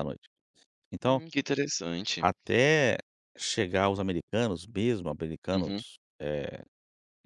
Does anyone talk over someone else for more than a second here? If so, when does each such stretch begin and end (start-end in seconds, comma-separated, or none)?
none